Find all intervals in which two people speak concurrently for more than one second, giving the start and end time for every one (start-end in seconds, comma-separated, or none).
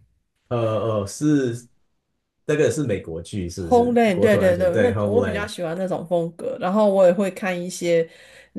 3.6-5.5